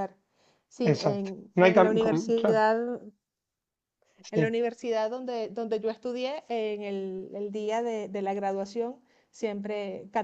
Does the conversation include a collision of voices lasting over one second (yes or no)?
yes